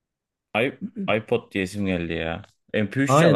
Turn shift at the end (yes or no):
yes